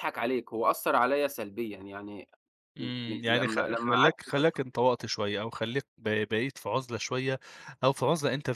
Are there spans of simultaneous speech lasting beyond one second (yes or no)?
yes